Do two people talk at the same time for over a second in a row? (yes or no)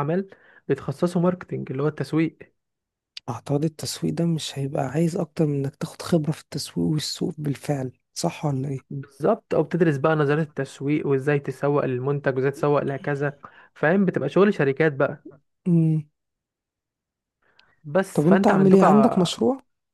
yes